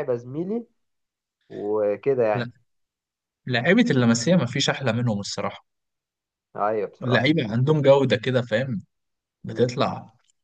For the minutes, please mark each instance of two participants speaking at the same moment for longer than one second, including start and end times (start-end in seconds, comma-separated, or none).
none